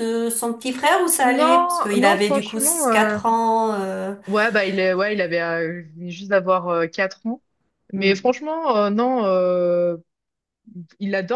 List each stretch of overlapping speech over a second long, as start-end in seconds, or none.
1.2-3.2